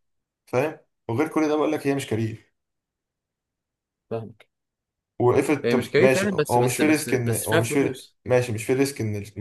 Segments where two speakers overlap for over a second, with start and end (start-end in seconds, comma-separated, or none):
5.6-8.2